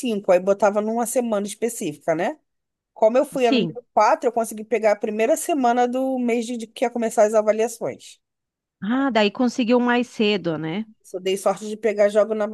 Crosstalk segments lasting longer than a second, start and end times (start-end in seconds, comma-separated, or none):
none